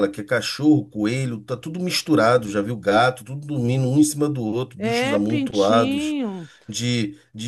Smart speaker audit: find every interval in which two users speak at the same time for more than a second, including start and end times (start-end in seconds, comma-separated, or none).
4.8-6.2